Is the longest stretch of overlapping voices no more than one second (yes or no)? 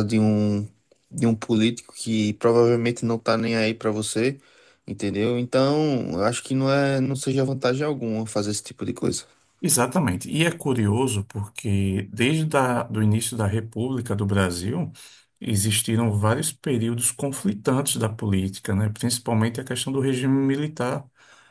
yes